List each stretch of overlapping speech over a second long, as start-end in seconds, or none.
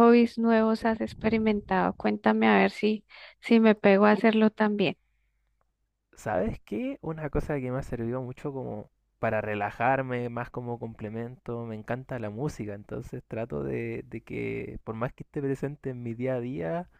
none